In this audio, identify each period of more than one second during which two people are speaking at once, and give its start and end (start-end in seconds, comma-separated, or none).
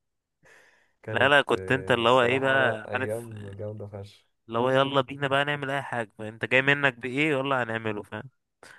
1.1-3.3